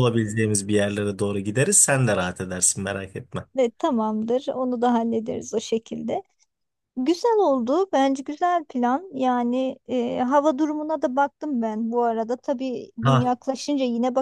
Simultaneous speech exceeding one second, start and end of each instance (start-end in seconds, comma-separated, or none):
none